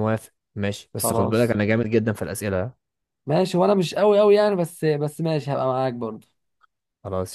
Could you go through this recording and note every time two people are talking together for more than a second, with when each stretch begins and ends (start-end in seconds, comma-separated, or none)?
none